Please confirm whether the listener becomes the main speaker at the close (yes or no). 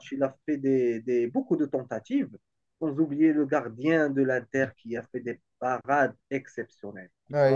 yes